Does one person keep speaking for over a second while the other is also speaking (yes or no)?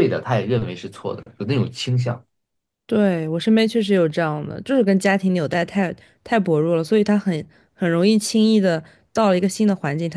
no